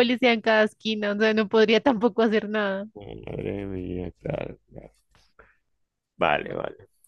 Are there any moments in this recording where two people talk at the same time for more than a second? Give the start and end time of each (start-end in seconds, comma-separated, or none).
none